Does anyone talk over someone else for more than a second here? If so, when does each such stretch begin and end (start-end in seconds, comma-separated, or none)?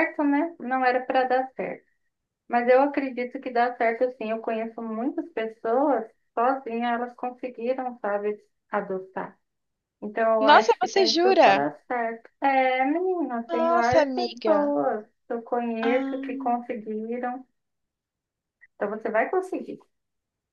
10.4-11.7, 13.5-14.7